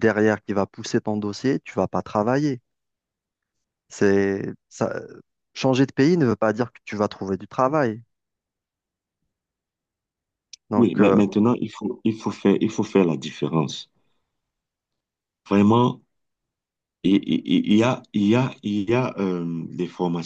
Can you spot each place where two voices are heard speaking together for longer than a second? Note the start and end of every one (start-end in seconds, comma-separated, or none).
none